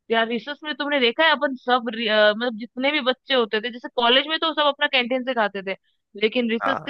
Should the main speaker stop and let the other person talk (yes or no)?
no